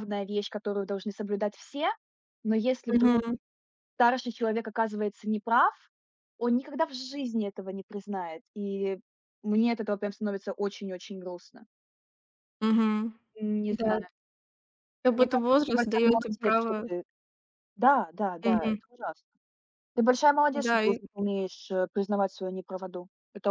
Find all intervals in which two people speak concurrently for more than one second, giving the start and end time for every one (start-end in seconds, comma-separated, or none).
15.1-16.8